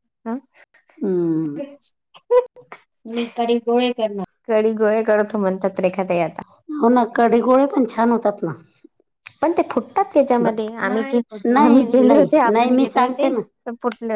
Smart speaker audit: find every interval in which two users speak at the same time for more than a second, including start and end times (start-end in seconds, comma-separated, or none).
11.6-13.4